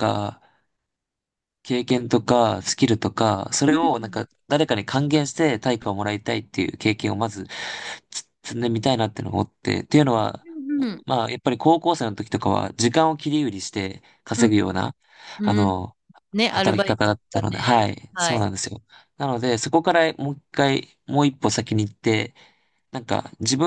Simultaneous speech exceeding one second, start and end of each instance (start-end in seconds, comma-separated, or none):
16.5-18.4